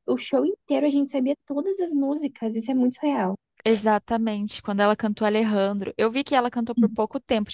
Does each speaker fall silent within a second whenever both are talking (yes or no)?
yes